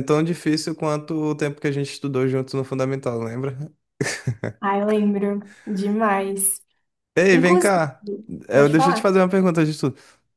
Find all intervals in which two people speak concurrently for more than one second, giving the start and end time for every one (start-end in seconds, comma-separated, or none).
none